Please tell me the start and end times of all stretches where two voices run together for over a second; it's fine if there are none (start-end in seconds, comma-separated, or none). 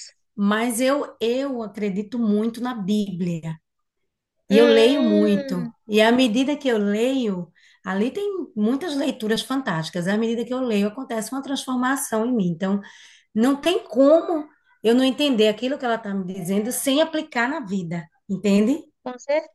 4.5-5.7